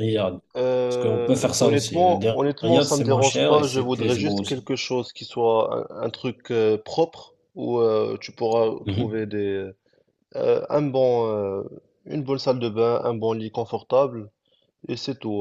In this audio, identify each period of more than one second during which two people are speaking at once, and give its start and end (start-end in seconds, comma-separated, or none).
0.9-4.7